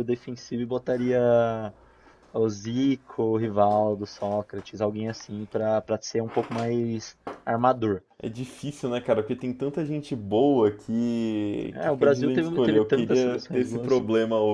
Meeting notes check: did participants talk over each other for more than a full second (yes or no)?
yes